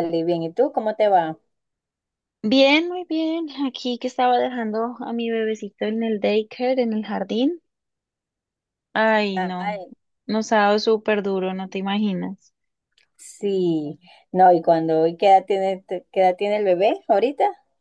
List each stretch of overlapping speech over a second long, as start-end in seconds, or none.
none